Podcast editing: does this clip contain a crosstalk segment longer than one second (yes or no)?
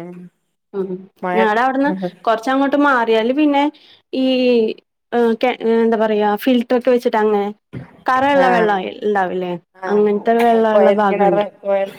yes